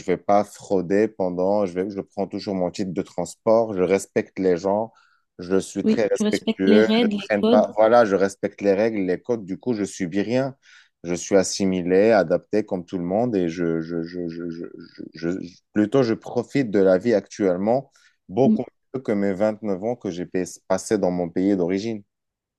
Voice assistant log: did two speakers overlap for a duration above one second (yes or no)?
yes